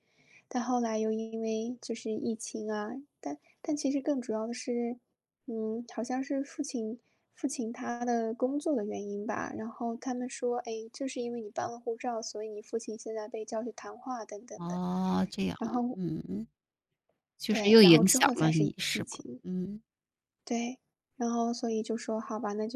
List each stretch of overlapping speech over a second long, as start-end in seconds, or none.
17.5-19.4